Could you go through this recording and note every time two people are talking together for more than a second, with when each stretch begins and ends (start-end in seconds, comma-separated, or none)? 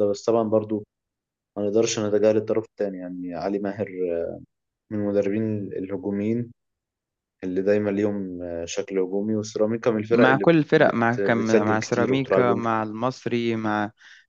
10.1-12.8